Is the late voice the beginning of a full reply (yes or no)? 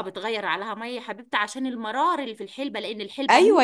yes